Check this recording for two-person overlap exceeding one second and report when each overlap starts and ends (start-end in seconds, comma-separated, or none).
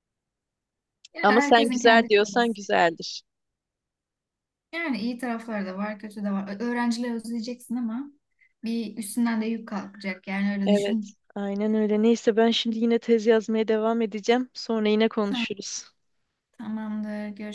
1.2-2.5